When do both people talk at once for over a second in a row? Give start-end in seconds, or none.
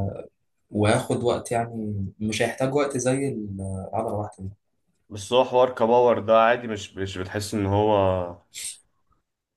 none